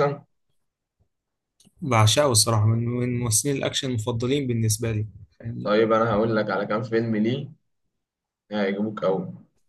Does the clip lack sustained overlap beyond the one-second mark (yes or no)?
yes